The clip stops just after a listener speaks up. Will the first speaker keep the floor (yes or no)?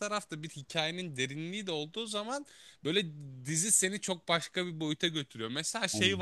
yes